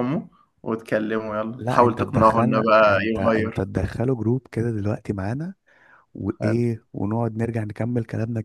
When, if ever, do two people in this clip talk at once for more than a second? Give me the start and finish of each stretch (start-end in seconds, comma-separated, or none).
1.6-3.6